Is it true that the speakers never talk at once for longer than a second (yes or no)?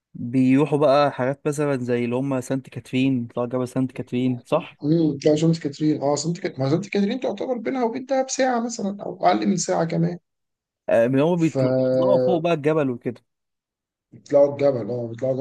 yes